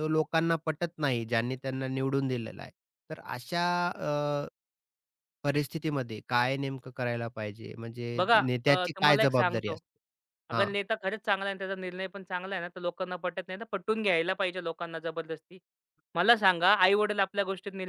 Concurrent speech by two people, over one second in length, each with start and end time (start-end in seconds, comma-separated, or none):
8.2-9.8